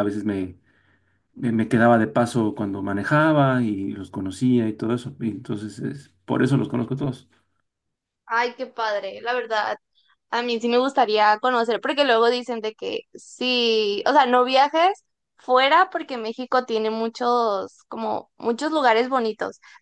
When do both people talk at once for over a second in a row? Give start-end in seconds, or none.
none